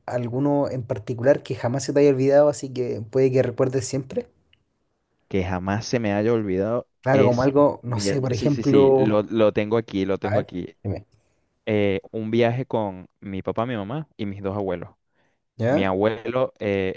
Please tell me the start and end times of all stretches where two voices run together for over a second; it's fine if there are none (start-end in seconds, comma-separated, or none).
7.0-9.2